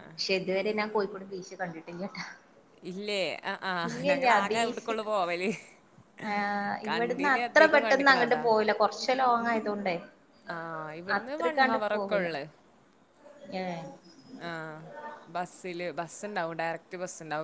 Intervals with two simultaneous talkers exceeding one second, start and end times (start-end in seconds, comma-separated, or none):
6.9-8.4